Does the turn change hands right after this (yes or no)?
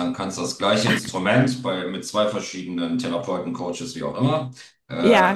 no